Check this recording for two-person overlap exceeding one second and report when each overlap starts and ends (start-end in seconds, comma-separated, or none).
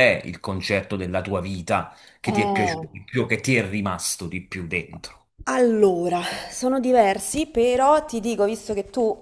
none